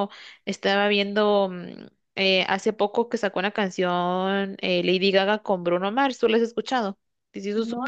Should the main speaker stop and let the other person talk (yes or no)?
yes